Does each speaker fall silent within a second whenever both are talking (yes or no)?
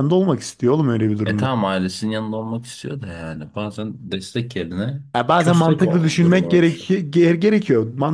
no